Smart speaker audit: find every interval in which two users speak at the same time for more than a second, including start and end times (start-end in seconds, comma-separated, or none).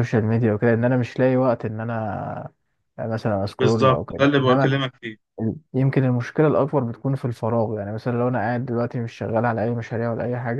3.6-4.9